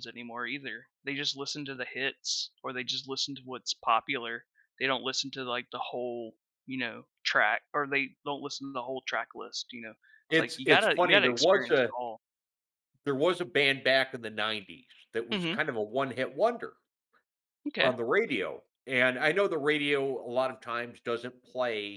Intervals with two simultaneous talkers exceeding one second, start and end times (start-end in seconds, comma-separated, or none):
10.3-11.9